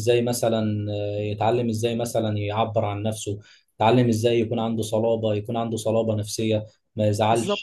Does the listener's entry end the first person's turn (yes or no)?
no